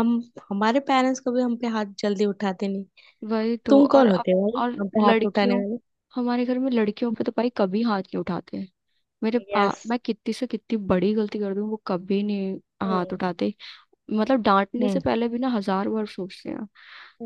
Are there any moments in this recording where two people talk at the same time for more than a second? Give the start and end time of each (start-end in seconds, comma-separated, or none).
3.7-5.6